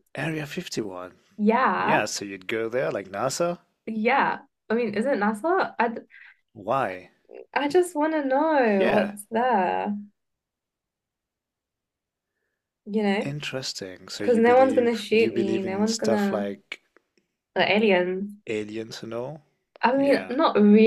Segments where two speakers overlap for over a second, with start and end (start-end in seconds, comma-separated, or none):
14.2-16.5